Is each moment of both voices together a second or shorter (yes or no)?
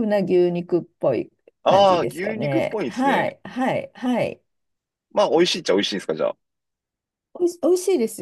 no